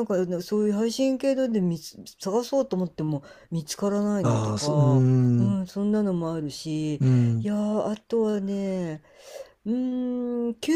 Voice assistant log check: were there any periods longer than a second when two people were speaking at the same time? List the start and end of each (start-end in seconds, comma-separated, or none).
4.2-5.6